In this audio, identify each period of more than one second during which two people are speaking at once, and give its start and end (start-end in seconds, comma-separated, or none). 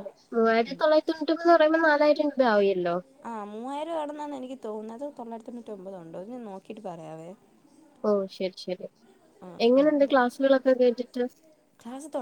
none